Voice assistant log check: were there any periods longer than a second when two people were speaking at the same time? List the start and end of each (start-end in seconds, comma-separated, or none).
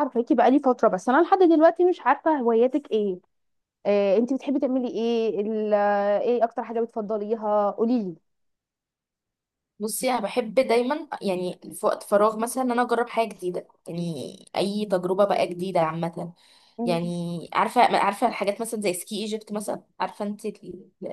none